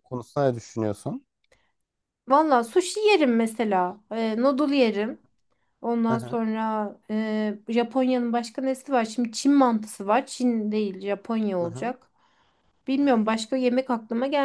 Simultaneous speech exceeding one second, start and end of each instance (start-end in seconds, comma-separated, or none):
none